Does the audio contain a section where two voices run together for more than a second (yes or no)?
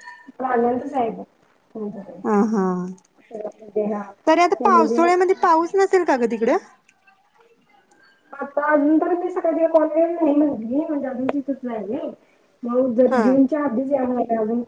no